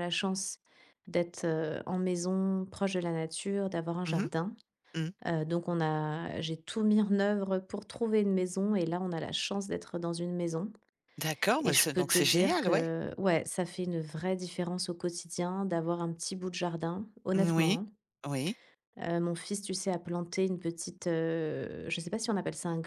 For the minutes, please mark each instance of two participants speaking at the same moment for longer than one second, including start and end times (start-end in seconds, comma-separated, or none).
11.6-12.9